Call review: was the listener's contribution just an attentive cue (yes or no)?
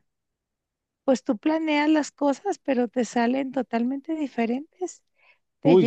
yes